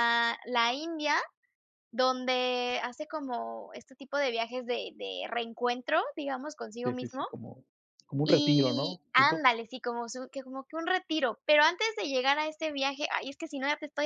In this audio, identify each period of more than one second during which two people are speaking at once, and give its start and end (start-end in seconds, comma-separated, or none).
8.2-9.5